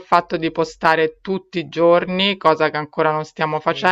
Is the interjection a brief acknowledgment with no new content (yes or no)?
no